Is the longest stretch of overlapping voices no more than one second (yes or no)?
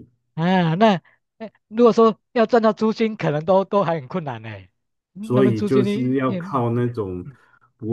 no